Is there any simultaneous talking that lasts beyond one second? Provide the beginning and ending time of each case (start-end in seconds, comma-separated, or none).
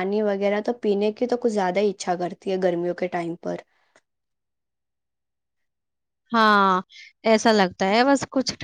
none